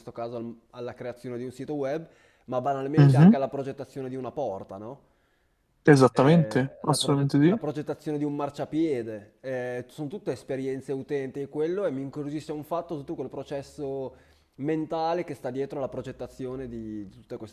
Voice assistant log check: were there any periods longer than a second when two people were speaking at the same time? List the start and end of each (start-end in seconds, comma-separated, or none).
6.1-7.6